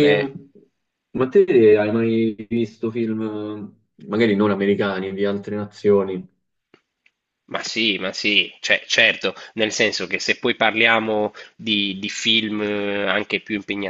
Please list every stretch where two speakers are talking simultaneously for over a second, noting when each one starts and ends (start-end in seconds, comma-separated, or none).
none